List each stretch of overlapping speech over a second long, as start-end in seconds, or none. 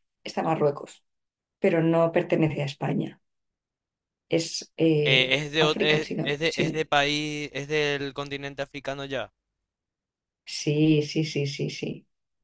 5.0-6.8